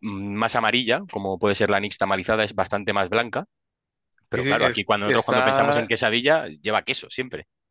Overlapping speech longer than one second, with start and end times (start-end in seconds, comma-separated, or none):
4.3-5.9